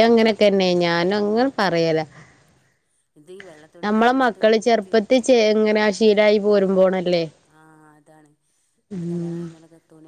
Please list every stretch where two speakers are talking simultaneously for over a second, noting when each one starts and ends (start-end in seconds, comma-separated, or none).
3.8-5.3